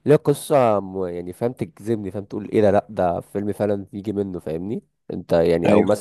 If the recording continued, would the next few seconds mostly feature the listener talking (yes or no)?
no